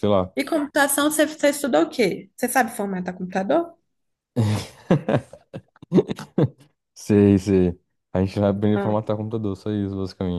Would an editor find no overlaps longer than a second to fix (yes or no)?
yes